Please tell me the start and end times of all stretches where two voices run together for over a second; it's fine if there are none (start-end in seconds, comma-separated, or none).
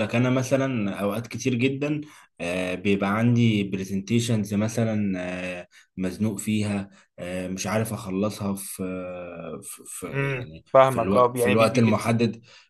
10.1-12.1